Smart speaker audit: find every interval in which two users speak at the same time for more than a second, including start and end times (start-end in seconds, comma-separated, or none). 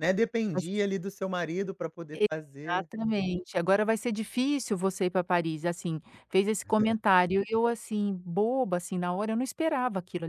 none